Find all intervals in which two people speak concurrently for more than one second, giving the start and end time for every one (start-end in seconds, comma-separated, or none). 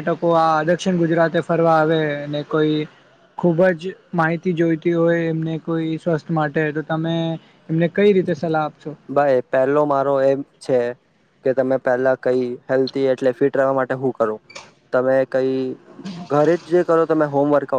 none